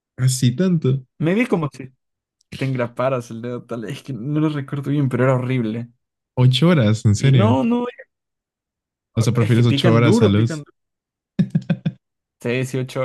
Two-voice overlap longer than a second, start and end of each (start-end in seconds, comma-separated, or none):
9.4-10.7